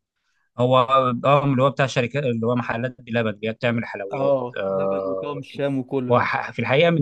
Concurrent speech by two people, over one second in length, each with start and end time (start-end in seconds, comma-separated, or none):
4.1-5.4